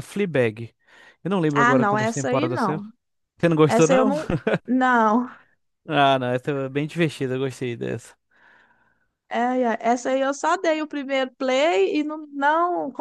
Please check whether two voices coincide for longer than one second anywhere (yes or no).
yes